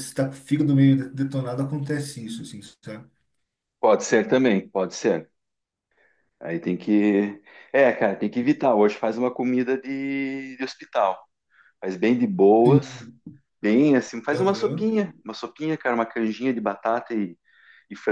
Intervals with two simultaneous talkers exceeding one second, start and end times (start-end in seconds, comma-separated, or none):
none